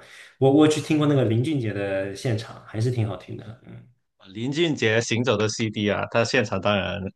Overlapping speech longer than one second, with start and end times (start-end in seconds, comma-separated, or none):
none